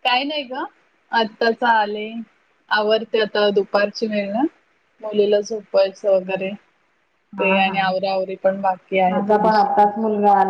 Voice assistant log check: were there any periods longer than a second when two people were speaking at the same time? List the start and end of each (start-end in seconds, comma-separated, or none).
none